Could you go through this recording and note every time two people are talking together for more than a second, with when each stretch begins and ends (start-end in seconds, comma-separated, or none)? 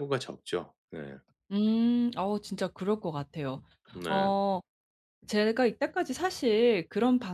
none